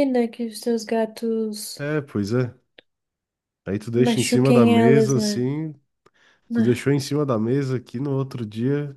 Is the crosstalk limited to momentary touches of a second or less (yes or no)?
no